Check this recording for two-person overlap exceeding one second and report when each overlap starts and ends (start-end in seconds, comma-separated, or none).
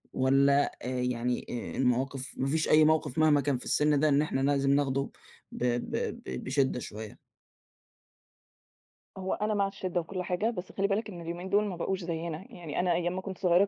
none